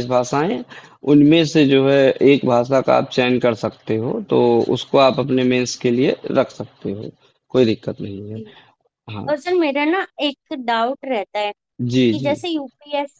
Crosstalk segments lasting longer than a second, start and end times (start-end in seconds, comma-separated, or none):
none